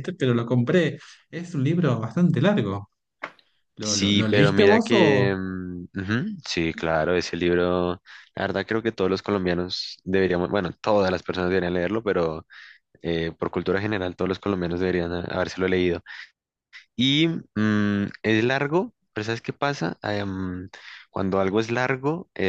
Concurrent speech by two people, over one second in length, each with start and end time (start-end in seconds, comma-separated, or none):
3.8-5.3